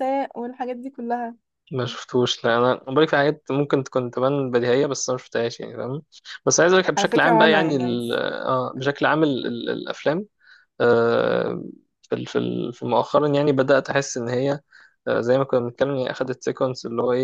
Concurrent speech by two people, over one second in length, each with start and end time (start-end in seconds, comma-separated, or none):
7.0-8.2